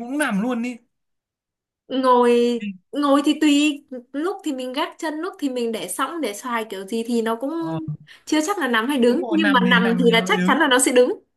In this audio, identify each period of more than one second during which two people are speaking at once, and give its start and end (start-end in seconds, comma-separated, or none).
9.0-10.6